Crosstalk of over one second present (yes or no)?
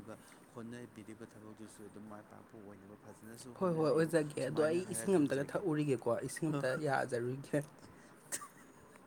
yes